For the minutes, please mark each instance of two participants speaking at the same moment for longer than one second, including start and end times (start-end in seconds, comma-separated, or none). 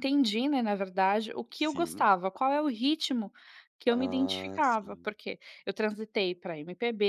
3.9-5.1